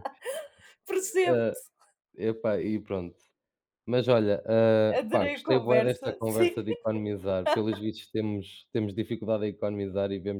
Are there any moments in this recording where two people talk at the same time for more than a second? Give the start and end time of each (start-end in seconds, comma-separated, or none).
5.0-6.6